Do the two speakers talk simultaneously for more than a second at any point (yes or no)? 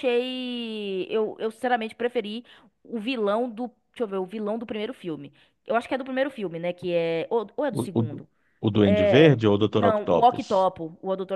yes